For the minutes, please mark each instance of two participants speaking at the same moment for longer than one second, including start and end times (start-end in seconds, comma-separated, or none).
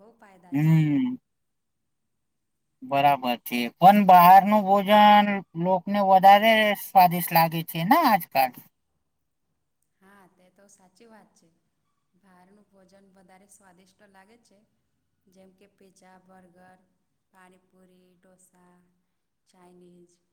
none